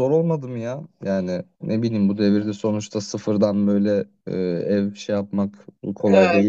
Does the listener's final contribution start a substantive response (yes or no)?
yes